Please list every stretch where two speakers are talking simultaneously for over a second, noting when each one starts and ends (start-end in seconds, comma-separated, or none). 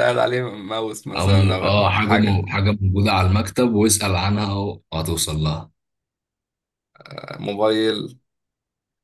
1.2-2.5